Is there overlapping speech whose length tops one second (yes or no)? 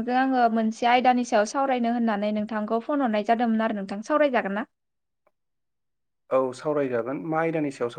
no